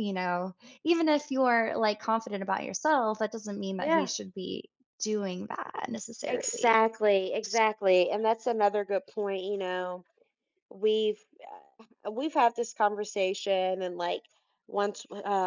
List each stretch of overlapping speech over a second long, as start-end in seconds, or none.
none